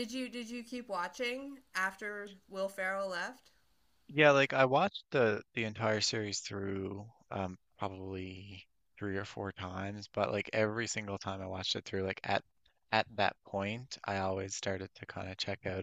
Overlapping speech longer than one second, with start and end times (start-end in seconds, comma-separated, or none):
none